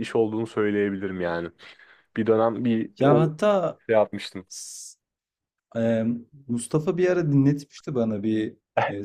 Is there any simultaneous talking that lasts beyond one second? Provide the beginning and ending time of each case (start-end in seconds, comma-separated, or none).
none